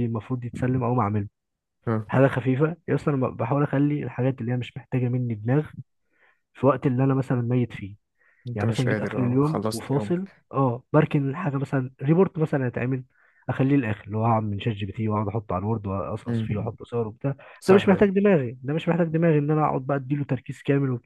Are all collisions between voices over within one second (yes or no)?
no